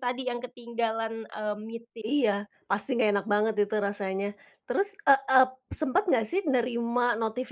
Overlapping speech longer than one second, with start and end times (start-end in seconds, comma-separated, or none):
none